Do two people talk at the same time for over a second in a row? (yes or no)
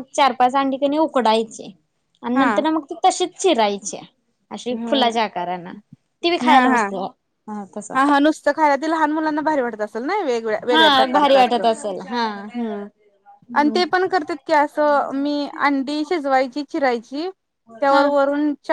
yes